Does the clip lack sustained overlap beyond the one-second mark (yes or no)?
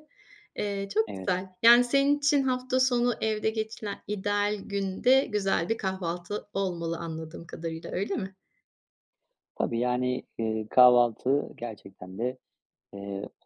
yes